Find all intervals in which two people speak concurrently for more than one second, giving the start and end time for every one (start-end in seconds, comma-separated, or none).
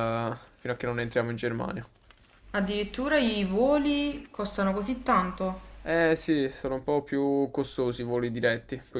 none